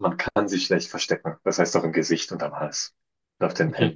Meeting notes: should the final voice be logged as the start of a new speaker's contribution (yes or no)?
yes